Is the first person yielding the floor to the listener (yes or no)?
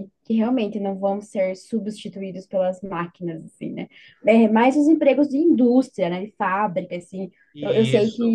no